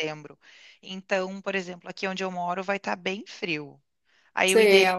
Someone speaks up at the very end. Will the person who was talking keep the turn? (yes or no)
yes